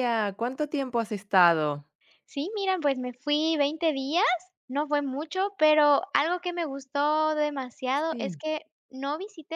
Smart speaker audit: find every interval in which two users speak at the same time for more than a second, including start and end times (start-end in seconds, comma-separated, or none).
none